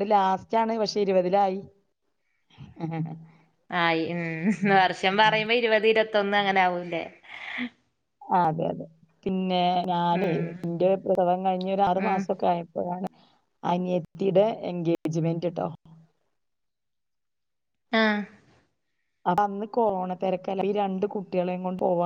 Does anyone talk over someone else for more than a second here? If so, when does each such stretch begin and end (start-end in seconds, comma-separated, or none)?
none